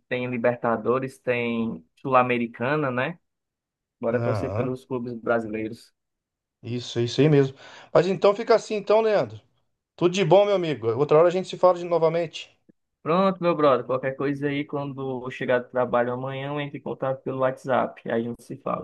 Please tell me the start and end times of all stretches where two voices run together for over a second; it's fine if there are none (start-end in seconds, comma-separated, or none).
none